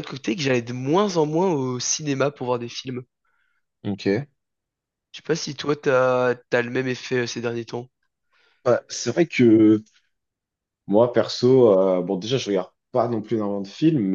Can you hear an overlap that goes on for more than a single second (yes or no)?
no